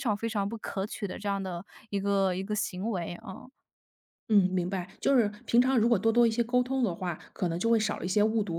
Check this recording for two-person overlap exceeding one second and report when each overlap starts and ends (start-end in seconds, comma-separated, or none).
none